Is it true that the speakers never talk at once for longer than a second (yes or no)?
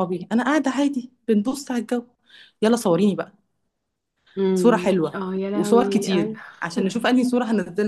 no